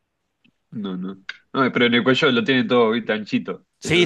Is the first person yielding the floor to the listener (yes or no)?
yes